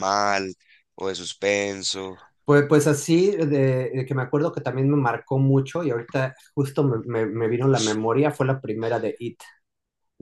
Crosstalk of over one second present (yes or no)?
no